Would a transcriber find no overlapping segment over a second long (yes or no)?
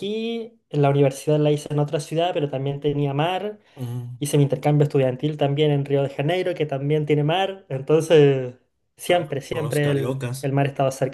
no